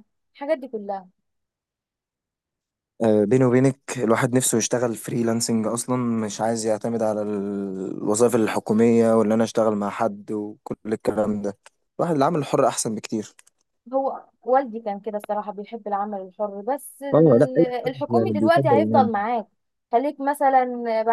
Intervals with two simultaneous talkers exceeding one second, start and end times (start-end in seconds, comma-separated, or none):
17.1-19.1